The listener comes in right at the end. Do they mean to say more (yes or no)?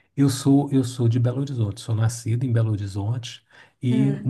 no